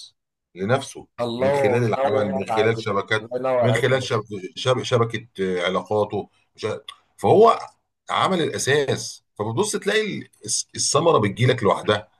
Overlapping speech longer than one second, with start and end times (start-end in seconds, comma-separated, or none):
1.2-4.2